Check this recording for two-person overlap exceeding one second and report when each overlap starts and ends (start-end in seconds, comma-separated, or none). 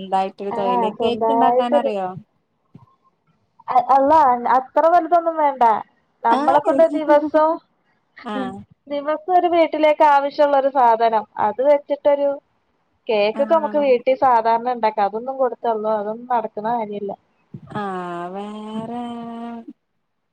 0.6-1.9